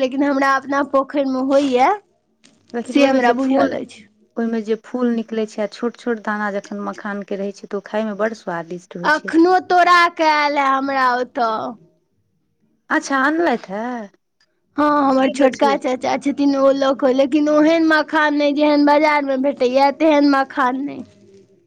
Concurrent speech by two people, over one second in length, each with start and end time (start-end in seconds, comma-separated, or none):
none